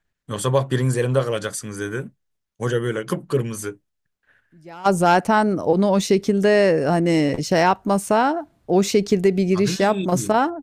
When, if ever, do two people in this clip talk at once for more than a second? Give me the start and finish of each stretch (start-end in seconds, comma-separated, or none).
none